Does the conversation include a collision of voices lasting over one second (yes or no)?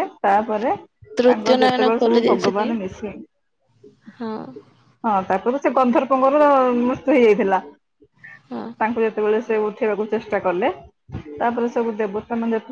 yes